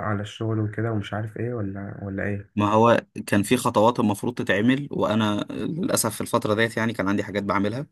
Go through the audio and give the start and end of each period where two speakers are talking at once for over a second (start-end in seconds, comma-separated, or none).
none